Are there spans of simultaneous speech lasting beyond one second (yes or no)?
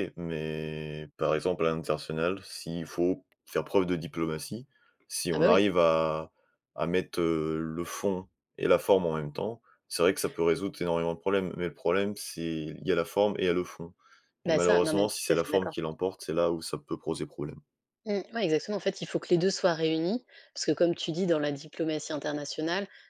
yes